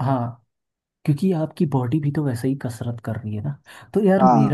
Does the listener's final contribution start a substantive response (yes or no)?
no